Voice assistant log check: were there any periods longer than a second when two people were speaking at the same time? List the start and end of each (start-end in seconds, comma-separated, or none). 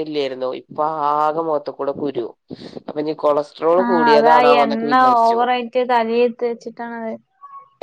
none